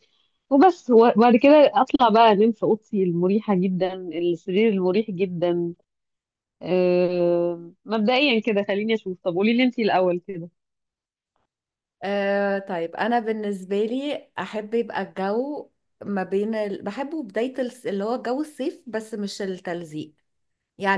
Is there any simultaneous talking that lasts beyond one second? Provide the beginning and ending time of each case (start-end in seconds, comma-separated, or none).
none